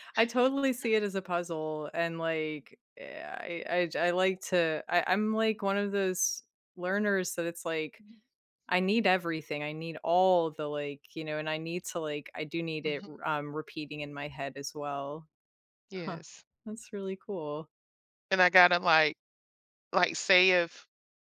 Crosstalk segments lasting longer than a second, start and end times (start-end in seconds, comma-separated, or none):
none